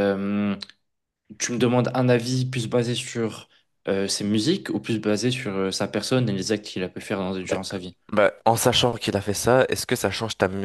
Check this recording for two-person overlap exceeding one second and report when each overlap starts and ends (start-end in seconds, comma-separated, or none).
none